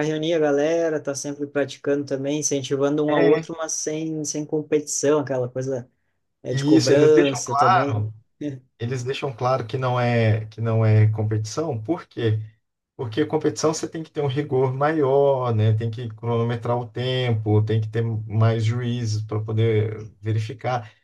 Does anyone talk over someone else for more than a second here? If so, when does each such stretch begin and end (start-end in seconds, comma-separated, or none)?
6.5-8.1